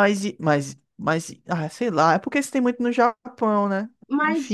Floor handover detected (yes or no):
yes